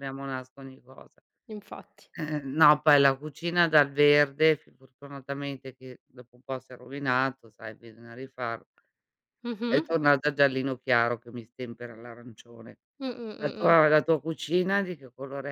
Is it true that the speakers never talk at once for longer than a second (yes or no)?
yes